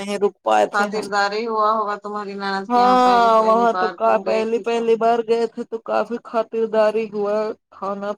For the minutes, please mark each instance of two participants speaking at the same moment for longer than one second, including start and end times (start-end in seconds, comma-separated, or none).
2.7-4.9